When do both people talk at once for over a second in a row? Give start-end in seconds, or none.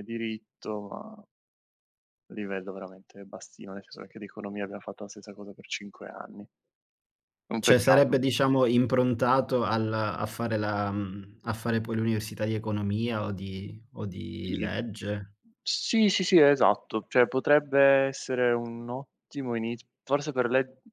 none